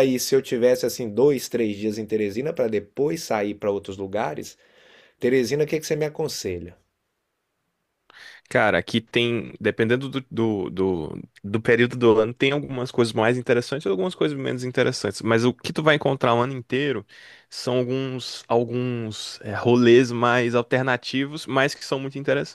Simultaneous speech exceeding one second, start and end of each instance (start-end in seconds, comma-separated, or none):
none